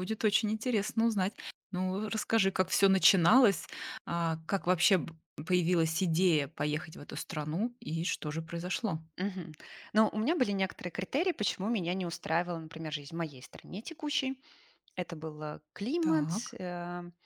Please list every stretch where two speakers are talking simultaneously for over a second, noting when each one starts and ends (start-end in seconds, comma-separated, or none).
none